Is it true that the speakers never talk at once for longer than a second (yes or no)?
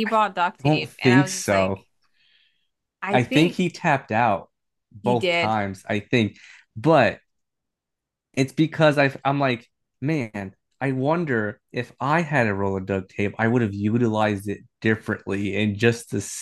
no